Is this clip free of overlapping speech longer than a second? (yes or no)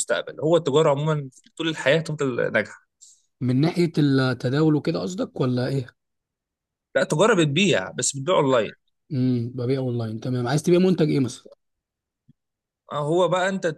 yes